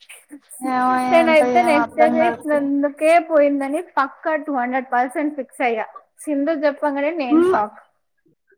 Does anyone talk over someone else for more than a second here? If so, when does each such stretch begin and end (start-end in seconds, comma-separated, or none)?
1.1-2.6